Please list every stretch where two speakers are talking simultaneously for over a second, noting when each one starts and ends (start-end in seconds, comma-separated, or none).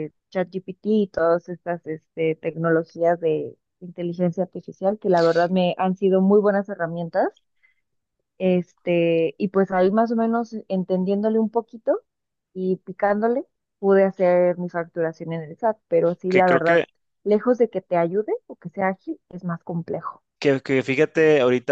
none